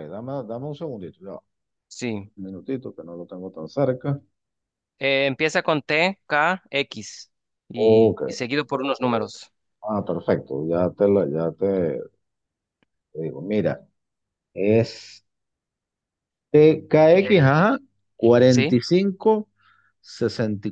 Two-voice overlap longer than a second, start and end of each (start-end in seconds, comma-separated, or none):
none